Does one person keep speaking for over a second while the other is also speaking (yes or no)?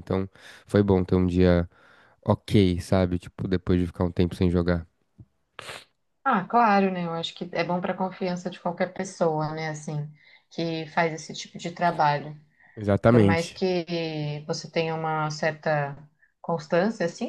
no